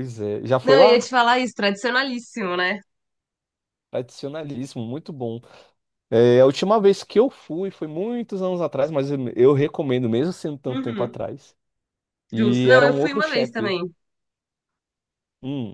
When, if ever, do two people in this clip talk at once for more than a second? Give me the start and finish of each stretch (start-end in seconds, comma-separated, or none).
12.3-13.8